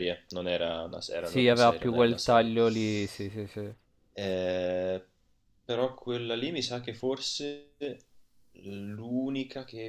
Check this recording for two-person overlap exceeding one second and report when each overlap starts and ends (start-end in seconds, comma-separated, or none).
1.2-2.5